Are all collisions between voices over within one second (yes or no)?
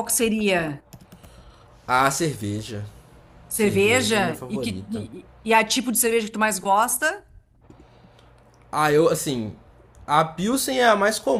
no